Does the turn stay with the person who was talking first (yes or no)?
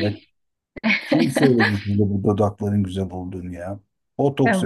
no